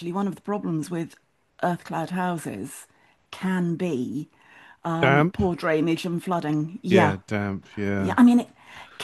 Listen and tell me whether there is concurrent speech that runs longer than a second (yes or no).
no